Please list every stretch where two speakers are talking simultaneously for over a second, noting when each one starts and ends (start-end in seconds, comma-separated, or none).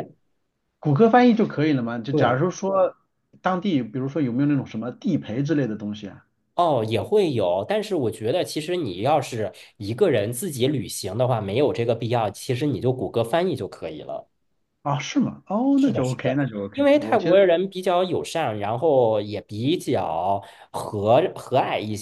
15.8-17.4